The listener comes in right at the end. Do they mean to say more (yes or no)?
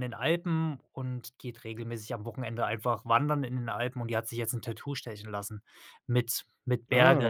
no